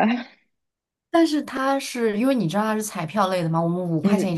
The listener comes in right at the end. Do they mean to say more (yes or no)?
no